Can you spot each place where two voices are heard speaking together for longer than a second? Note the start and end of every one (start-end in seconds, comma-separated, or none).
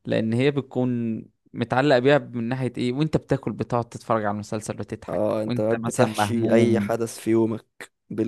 5.1-7.0